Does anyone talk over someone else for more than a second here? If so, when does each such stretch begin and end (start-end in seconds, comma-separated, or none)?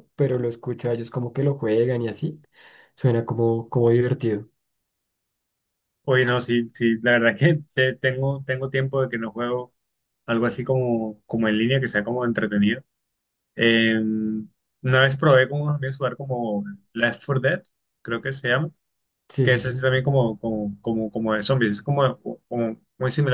none